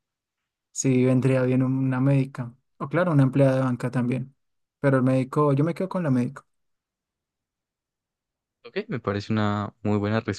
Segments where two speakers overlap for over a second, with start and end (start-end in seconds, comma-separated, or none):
none